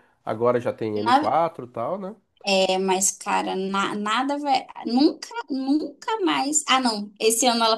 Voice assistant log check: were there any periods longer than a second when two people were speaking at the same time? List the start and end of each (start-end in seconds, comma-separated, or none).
none